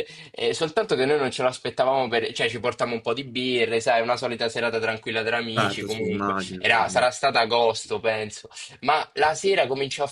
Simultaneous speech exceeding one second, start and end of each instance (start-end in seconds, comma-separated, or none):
5.5-7.1